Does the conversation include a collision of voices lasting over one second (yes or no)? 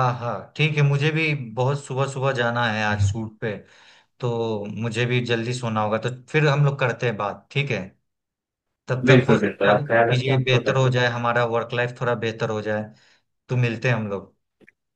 yes